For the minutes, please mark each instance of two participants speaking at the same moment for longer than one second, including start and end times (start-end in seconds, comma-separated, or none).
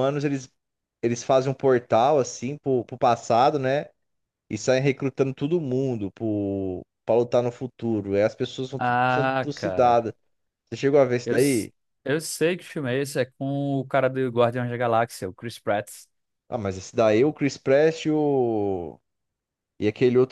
8.8-10.0